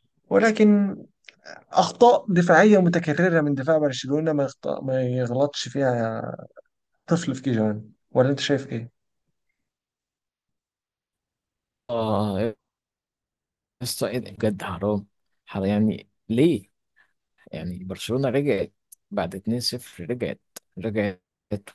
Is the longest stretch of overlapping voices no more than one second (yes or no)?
yes